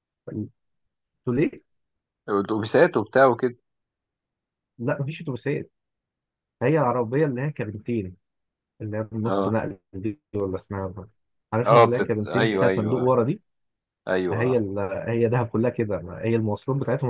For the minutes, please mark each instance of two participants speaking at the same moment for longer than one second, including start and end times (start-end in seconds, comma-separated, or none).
11.6-13.2